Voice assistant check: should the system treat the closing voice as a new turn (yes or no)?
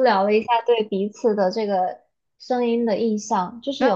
yes